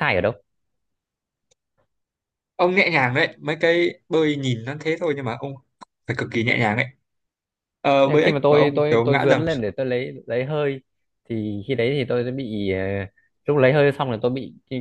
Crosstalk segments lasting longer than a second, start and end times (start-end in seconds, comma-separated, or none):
8.0-9.4